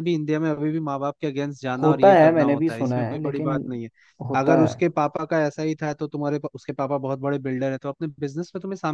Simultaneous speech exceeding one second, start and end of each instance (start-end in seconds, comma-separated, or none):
1.8-3.5